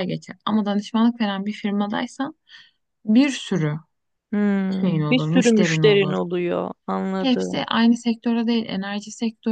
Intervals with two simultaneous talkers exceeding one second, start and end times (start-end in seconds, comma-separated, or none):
4.8-6.2